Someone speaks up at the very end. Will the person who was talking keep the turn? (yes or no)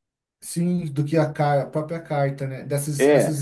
no